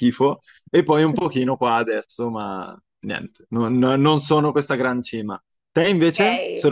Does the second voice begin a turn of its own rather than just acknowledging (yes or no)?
yes